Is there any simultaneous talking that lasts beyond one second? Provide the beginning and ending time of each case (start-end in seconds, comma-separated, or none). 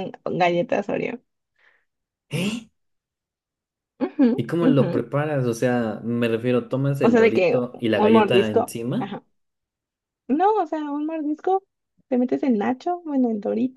7.0-9.2